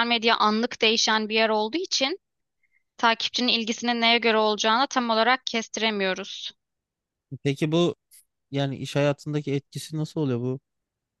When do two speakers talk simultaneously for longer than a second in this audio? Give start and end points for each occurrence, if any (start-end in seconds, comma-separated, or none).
none